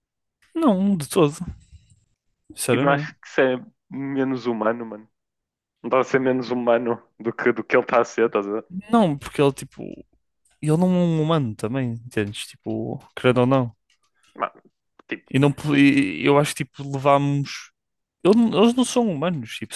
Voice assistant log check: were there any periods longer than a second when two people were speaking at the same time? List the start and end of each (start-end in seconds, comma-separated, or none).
none